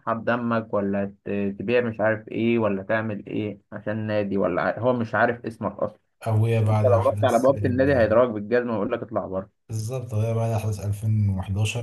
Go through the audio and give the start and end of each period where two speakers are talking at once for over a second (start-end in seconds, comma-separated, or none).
6.7-8.1